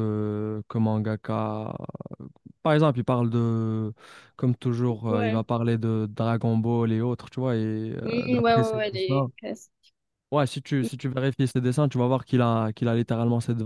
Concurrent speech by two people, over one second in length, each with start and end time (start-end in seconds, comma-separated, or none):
8.0-9.3